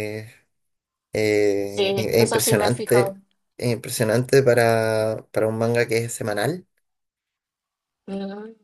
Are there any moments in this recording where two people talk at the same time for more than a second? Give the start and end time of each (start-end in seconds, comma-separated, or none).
1.7-3.2